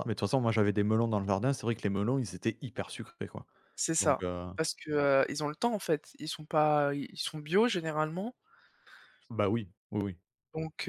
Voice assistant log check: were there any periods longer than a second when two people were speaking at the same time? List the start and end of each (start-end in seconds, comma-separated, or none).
none